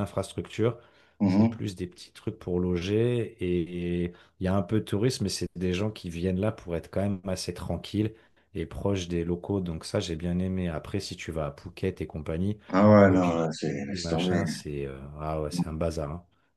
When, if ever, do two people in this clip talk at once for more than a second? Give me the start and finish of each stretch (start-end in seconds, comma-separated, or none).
13.0-14.4